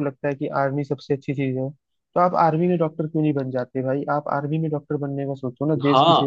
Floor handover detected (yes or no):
yes